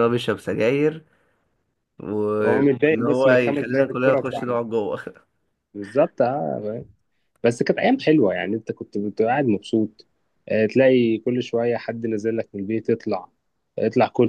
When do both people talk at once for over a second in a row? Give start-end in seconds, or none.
2.4-4.6